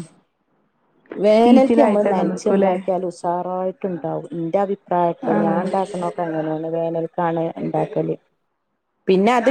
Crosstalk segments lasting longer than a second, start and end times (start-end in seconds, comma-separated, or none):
1.4-2.7